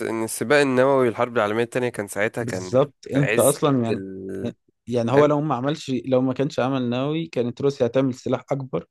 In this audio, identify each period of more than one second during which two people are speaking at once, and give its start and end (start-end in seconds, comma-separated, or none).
2.4-4.0